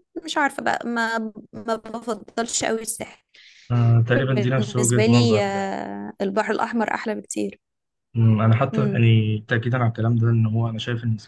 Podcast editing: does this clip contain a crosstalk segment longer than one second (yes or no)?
yes